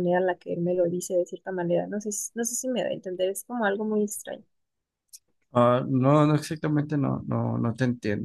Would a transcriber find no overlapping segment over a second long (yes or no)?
yes